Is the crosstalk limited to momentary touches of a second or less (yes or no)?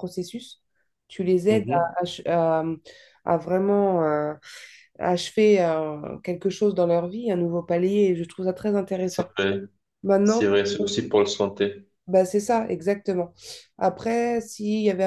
yes